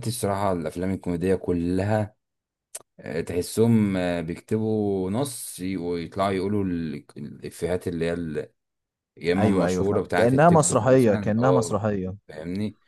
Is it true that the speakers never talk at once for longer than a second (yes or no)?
no